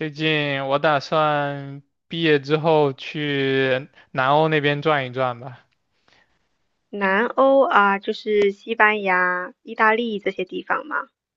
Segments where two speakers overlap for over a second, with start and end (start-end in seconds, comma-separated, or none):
none